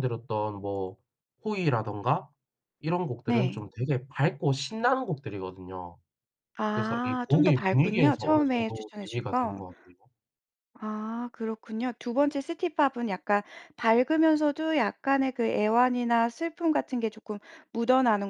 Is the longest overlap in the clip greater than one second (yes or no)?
yes